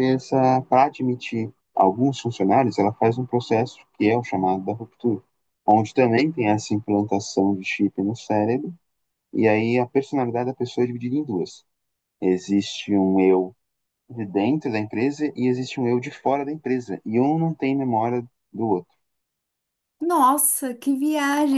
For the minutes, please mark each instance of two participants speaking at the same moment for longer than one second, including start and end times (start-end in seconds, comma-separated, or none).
none